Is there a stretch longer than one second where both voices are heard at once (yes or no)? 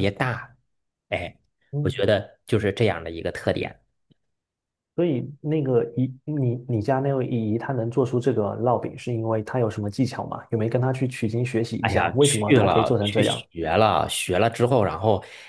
yes